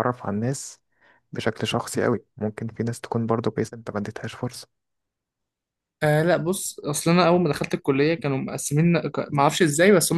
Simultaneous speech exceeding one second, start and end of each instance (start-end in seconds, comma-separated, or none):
none